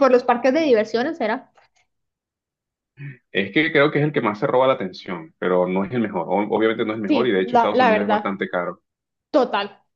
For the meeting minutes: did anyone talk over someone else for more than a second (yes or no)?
yes